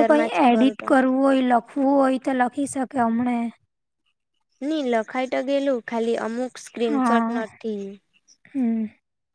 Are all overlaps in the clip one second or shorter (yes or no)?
yes